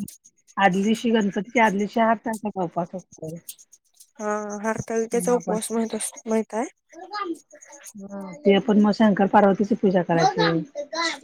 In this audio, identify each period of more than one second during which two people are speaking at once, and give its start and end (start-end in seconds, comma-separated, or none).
none